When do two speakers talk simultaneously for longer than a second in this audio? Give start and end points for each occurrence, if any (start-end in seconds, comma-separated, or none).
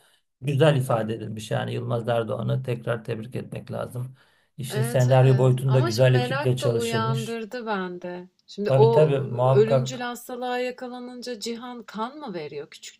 4.7-7.4, 8.7-10.1